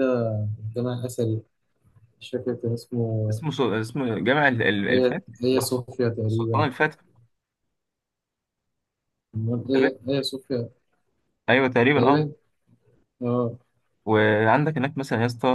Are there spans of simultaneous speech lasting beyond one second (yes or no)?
yes